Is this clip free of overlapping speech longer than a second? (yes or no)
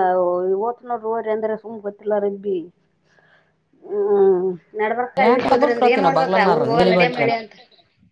no